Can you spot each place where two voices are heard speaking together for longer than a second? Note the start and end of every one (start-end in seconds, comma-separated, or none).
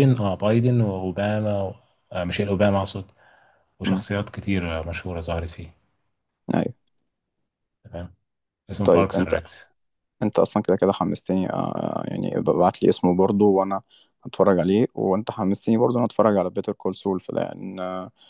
none